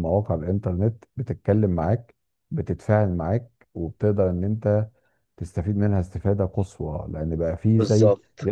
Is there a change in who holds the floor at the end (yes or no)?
no